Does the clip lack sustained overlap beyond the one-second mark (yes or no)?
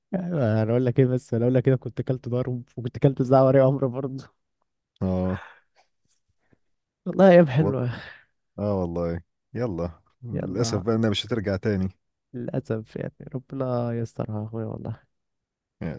yes